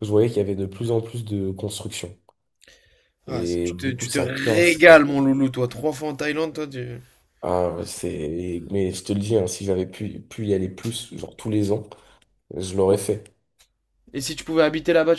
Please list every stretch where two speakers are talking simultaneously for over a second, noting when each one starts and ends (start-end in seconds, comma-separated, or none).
3.3-4.8